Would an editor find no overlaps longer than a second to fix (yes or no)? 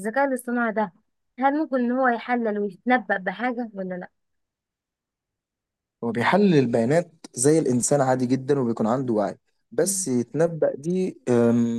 yes